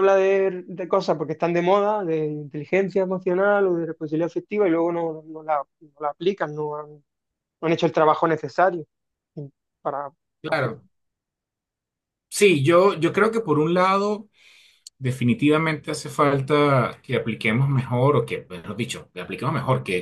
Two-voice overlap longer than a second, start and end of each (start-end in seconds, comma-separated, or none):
none